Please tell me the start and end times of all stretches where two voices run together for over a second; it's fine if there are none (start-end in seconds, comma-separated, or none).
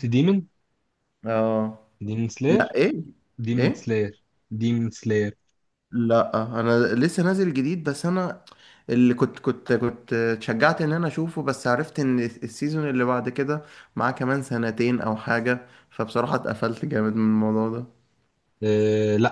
none